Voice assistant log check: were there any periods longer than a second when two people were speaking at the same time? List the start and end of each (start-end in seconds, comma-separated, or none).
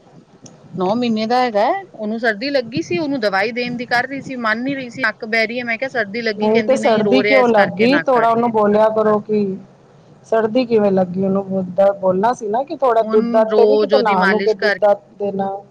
6.4-8.4